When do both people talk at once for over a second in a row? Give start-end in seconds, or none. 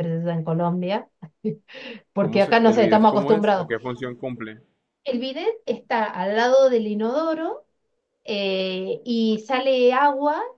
2.2-3.7